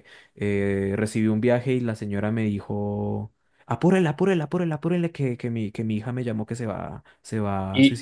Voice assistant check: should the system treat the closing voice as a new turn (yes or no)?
yes